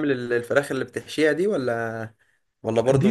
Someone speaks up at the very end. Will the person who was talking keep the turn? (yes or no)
no